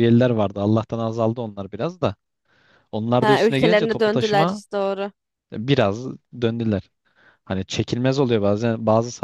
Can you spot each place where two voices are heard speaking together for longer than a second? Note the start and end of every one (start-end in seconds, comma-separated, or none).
3.2-4.6